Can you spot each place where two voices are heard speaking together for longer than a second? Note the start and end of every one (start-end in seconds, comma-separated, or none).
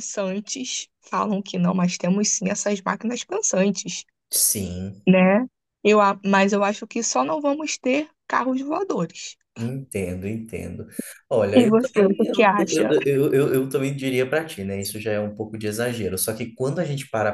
11.5-12.9